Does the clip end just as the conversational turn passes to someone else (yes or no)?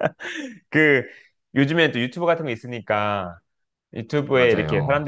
no